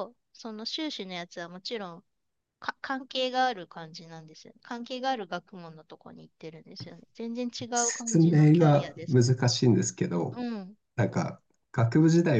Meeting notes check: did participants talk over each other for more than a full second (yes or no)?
yes